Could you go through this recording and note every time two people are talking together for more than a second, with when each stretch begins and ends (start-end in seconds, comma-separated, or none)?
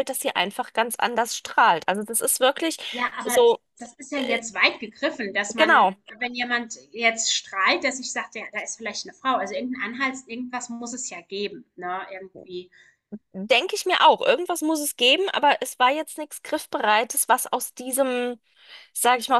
none